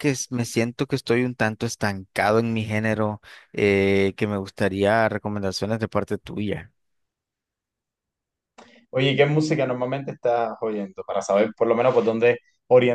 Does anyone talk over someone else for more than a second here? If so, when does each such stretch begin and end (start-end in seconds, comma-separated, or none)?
none